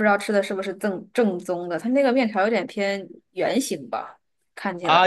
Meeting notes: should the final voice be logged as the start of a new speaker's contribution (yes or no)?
yes